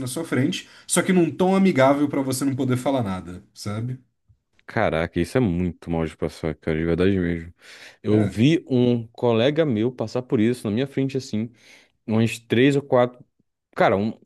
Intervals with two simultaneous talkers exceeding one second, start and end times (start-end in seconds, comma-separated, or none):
none